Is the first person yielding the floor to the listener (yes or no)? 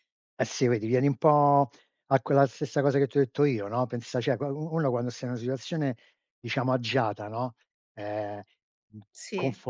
no